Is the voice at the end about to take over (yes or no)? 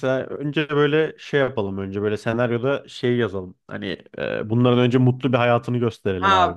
yes